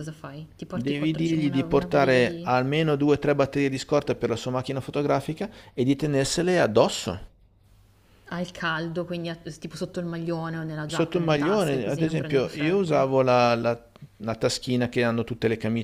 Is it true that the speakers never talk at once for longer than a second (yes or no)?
no